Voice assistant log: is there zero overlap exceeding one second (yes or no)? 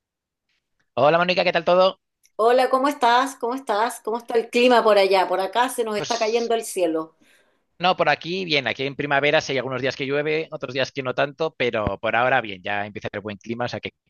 yes